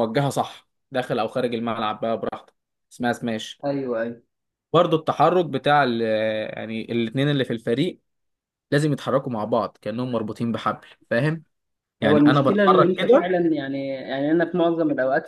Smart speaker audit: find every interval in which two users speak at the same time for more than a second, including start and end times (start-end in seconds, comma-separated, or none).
12.0-13.3